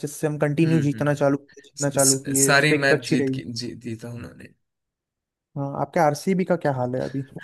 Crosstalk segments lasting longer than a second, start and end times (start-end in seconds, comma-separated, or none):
1.8-3.4